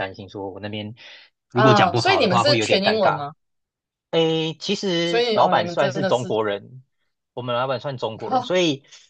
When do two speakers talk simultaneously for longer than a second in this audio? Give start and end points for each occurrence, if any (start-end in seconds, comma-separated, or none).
1.5-3.3, 5.0-6.3